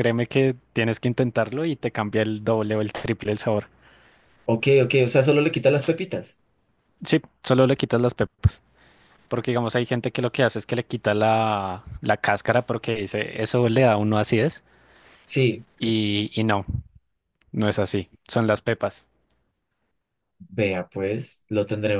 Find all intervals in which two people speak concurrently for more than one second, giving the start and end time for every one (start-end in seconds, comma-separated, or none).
none